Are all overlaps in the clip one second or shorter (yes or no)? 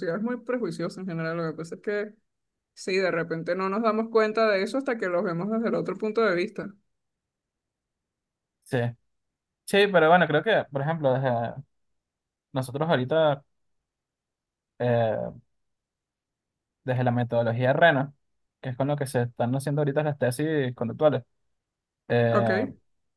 yes